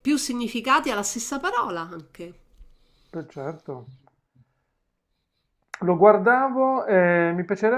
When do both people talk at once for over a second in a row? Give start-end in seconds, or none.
none